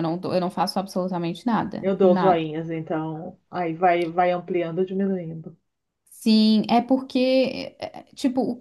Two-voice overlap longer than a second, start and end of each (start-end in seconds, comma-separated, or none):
none